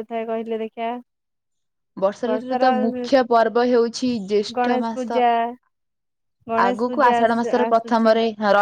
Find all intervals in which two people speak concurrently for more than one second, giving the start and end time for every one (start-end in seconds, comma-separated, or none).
6.7-8.1